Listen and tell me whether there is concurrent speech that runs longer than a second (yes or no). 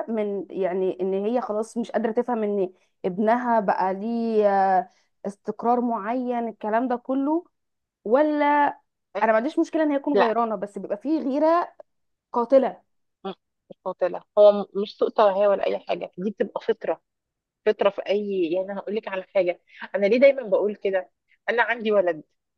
no